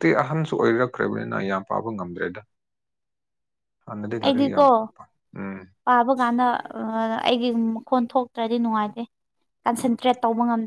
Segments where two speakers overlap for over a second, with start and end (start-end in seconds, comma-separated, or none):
none